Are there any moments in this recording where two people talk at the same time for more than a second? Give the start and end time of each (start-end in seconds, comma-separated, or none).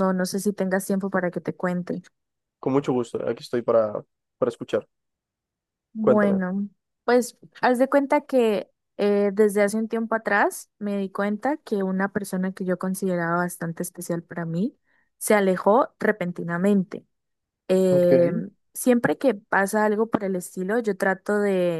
none